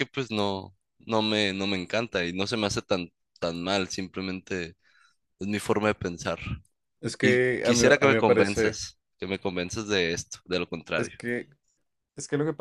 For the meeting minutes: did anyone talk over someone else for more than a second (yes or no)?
yes